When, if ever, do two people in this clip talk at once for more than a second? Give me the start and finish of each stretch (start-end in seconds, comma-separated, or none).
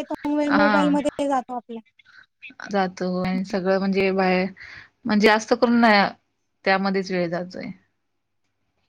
none